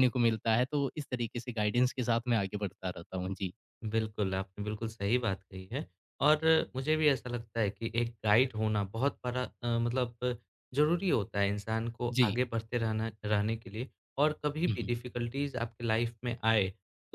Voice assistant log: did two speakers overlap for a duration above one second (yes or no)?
no